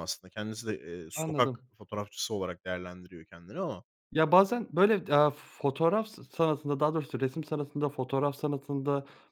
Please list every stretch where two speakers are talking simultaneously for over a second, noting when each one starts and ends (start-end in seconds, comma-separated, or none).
none